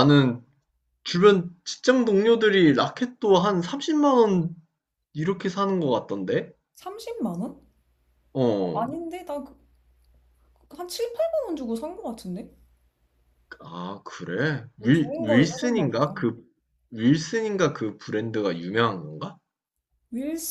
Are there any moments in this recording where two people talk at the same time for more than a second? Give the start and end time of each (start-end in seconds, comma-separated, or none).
14.8-16.1